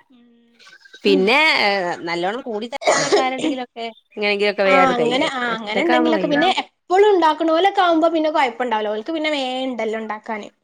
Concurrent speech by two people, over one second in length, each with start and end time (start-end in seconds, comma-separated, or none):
4.7-6.4